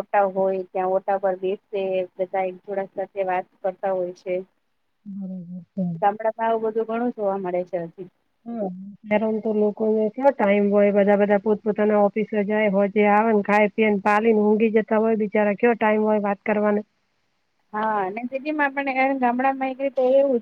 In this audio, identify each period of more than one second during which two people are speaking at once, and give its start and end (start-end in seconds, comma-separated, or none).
none